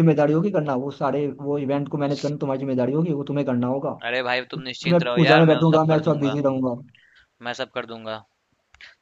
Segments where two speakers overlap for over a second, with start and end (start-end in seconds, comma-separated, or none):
4.6-6.4